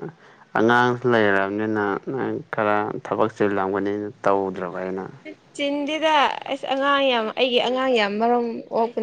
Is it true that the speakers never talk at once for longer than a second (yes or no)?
yes